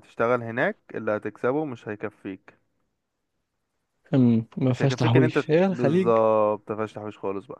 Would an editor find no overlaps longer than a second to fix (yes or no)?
no